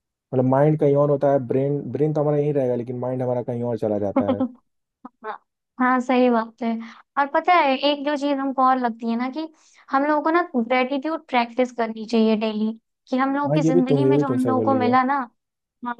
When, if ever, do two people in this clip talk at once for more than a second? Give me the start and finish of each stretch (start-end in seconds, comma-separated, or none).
13.5-15.0